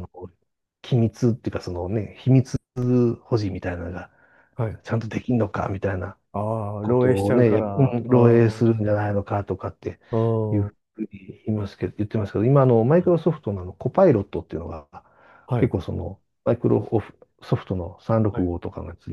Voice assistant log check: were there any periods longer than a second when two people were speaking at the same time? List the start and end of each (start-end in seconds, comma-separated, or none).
6.8-8.6